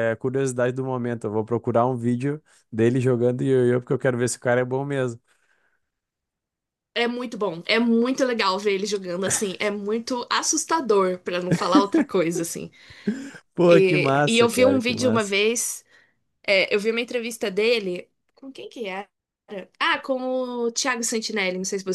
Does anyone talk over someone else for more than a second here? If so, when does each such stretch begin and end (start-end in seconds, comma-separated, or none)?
13.7-15.3